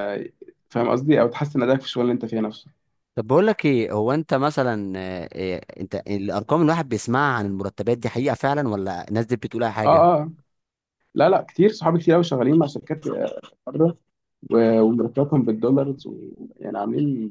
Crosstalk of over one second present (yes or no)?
no